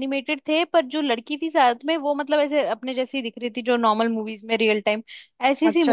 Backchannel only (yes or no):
no